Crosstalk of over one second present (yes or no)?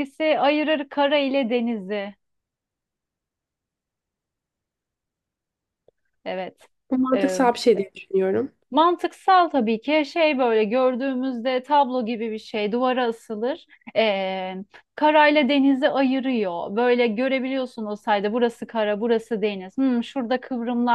no